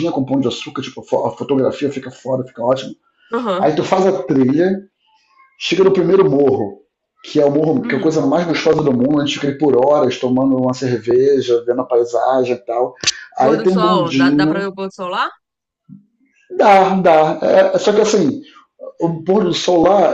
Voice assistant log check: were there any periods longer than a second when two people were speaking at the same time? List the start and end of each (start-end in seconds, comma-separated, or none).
13.4-14.7